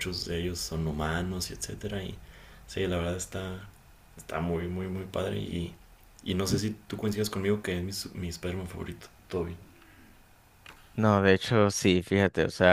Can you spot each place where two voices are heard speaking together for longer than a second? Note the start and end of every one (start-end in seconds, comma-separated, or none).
none